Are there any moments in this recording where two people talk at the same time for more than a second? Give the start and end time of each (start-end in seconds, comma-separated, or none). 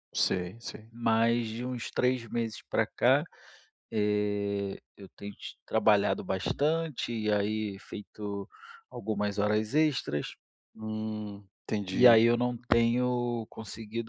none